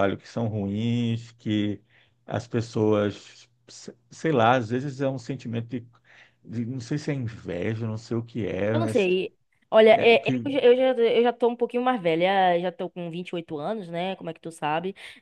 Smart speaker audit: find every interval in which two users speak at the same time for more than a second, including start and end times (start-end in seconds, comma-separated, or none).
none